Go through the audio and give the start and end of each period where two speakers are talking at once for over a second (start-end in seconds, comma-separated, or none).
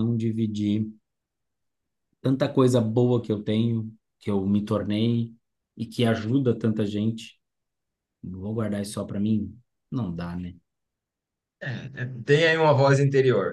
none